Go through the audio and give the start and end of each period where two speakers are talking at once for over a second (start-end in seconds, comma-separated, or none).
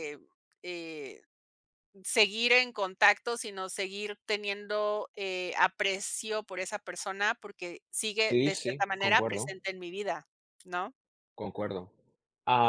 8.3-9.5